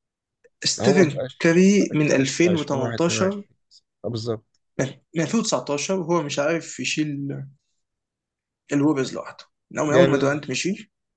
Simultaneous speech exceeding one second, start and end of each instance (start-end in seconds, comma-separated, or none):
0.8-3.4